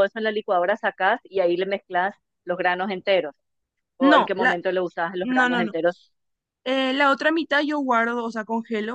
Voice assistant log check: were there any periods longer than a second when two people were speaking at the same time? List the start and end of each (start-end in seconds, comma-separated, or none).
none